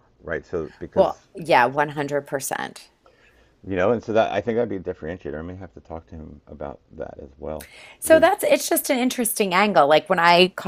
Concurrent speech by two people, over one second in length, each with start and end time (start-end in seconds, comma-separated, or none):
none